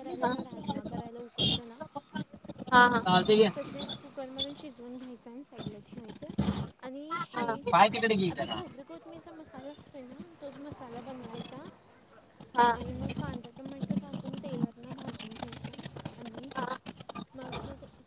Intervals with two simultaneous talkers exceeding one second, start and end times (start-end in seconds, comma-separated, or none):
none